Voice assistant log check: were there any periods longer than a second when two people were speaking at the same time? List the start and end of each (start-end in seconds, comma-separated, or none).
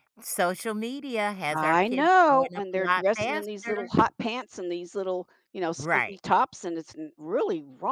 1.5-3.9